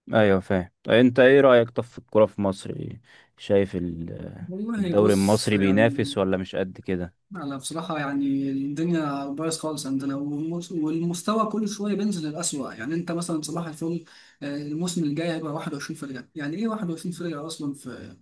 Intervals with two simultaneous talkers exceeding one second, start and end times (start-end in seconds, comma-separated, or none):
4.8-6.1